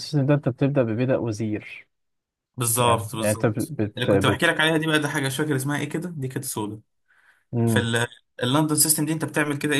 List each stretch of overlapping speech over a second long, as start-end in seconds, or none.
2.8-4.5